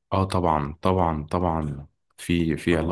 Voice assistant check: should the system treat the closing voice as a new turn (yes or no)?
no